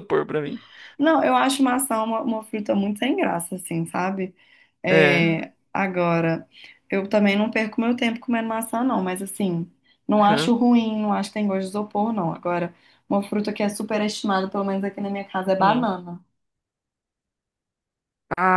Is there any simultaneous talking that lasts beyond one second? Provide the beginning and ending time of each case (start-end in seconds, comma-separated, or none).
none